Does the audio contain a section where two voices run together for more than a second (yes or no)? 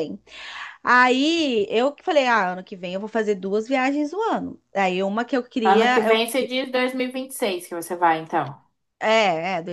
no